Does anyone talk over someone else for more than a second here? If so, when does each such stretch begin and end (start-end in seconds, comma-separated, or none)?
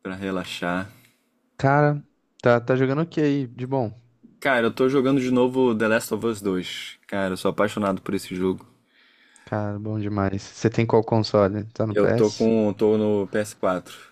none